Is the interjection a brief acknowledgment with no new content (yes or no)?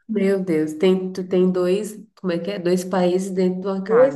no